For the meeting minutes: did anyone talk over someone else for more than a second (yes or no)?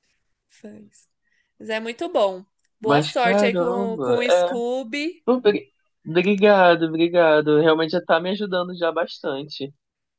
yes